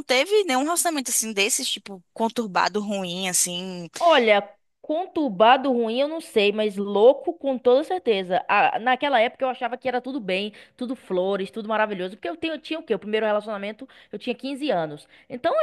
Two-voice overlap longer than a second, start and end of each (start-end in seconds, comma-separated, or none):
none